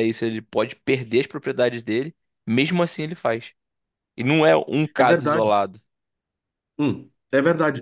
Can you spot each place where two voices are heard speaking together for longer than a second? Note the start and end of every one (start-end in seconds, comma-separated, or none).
none